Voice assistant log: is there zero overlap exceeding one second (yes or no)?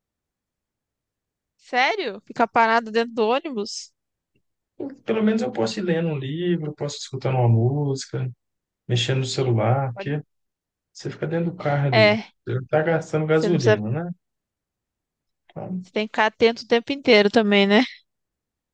yes